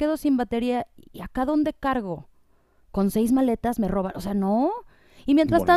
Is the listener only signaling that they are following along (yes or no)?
yes